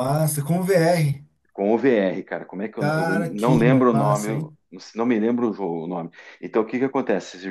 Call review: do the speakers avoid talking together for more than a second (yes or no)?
no